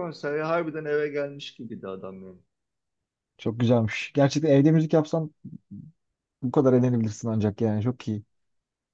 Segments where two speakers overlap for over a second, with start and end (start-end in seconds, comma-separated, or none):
none